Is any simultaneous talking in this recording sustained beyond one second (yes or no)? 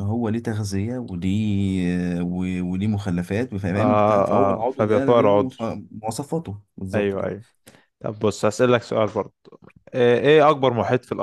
yes